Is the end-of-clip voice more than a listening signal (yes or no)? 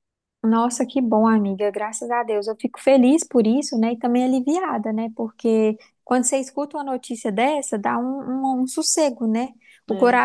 no